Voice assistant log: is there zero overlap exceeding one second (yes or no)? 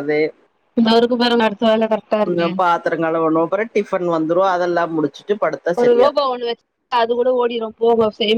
yes